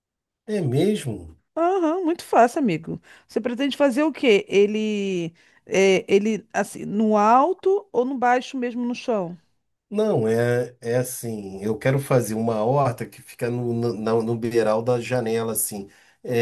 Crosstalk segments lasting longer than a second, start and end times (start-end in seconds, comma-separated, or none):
none